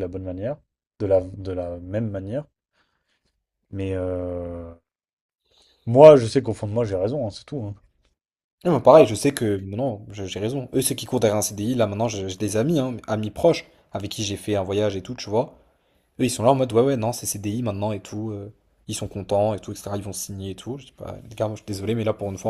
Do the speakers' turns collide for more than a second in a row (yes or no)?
no